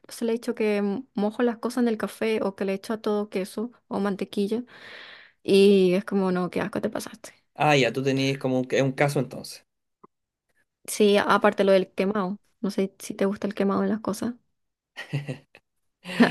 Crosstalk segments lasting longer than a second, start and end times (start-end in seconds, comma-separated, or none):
none